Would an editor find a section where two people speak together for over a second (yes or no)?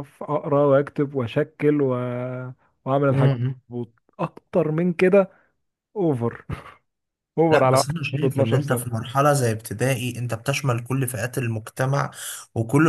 yes